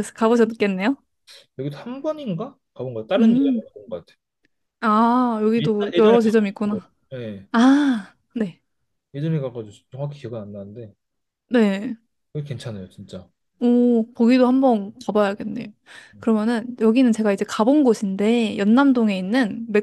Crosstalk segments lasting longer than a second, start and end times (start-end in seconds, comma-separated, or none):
5.6-6.9